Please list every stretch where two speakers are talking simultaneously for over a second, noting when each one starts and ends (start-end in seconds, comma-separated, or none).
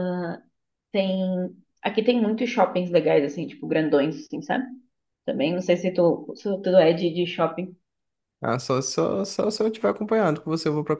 none